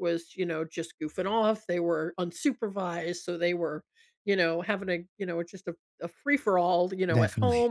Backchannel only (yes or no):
yes